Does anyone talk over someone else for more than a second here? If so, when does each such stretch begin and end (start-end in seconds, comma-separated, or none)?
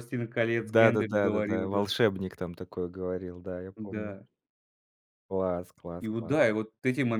0.6-1.9